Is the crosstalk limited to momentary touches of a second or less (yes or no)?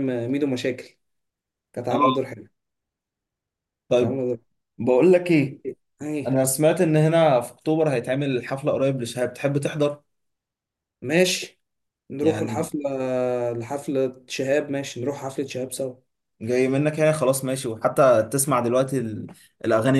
yes